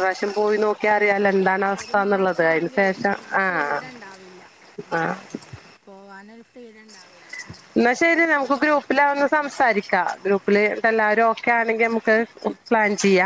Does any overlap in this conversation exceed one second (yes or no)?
yes